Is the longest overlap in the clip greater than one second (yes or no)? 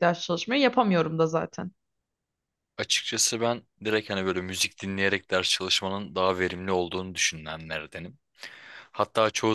no